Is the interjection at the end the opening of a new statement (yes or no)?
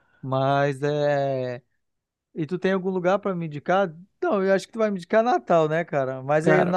no